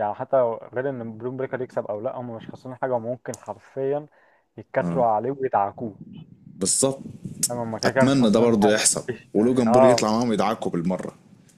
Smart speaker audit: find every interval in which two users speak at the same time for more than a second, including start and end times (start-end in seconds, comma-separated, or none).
7.9-10.2